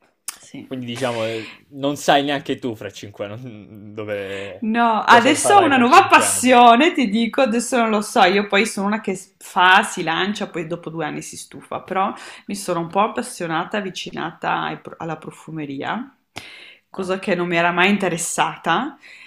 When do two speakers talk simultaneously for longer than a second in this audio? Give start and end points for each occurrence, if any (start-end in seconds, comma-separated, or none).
4.6-6.6